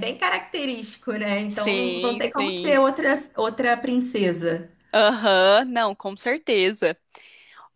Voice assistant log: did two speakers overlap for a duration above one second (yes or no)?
yes